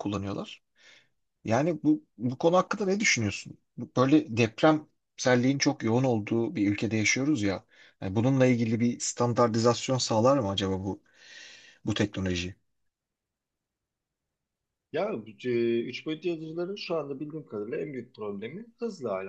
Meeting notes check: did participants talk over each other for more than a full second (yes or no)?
no